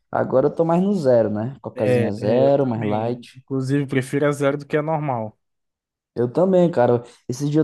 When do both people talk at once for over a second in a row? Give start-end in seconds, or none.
1.8-3.3